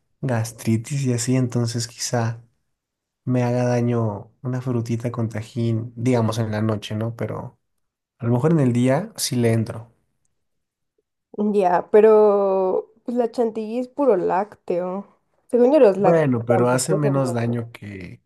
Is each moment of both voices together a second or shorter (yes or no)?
no